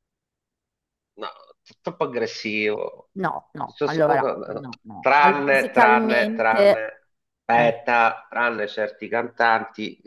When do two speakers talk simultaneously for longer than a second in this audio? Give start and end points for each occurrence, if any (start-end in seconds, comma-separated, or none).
5.0-6.9